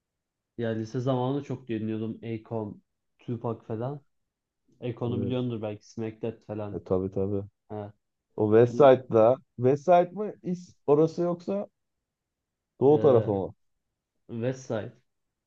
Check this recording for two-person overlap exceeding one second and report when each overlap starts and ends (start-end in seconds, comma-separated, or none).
none